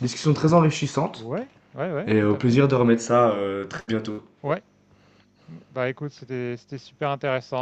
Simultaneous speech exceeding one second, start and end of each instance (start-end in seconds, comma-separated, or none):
none